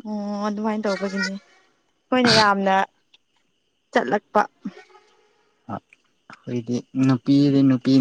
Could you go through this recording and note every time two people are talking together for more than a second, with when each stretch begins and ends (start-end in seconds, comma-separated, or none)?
none